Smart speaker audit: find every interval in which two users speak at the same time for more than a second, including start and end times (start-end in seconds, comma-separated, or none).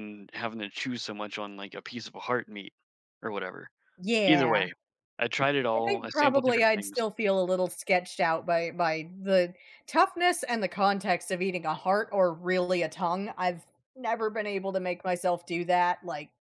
5.7-7.1